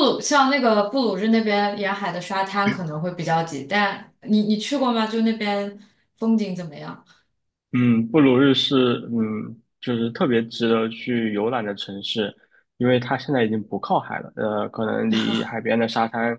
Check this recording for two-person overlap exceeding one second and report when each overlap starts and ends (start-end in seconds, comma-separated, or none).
none